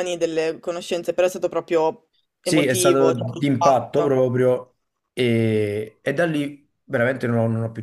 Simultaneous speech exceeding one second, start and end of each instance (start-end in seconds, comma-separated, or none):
2.4-4.2